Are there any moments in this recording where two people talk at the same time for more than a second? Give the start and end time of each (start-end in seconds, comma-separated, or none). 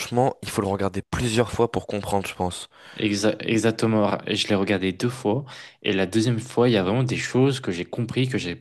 none